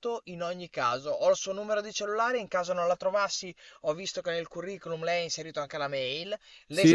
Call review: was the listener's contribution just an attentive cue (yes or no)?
yes